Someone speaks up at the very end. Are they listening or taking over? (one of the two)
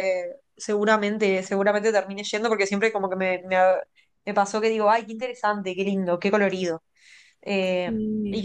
listening